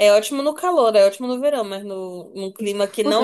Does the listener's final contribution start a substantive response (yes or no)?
yes